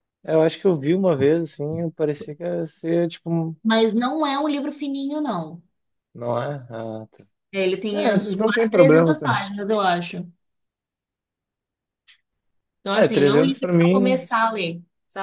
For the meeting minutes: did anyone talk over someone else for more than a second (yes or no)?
yes